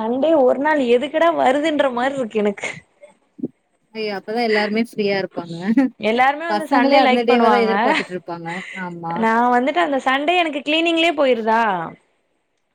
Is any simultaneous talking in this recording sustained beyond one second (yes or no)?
yes